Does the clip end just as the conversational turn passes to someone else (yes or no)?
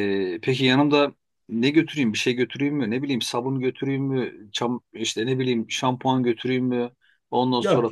no